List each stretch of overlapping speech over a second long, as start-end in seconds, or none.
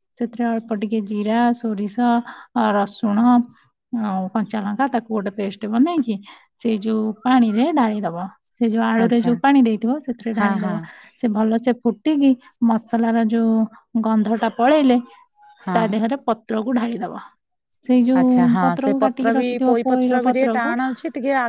18.2-20.7